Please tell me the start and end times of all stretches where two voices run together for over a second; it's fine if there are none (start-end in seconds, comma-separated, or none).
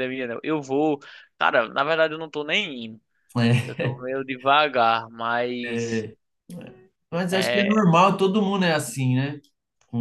none